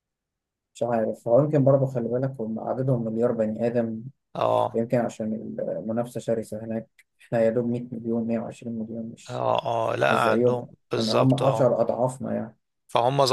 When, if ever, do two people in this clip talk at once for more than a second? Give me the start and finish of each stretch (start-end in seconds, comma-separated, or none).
10.1-11.7